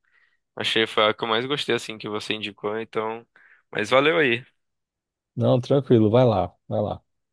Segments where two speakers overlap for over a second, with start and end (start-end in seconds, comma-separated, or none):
none